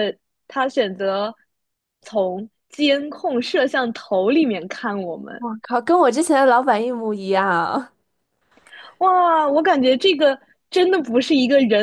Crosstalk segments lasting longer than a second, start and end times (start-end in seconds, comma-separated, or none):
none